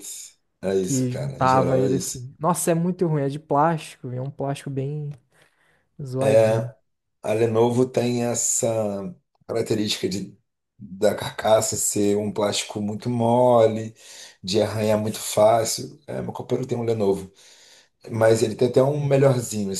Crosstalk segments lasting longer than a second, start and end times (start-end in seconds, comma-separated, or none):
0.8-2.3